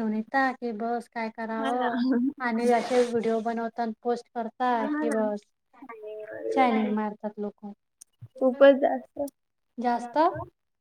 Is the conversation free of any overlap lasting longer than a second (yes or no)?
yes